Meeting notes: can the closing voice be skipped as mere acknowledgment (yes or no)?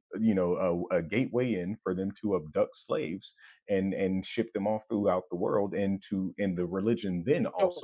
yes